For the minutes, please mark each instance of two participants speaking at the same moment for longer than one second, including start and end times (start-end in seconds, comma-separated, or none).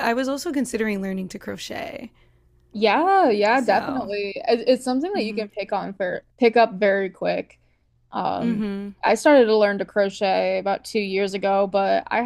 none